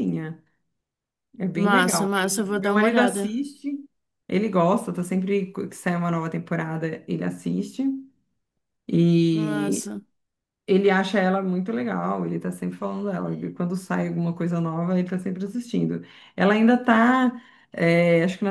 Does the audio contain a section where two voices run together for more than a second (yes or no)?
yes